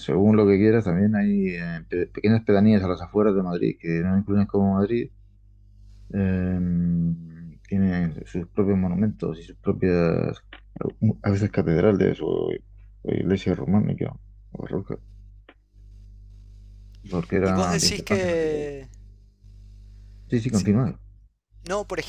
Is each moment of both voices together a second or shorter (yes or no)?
no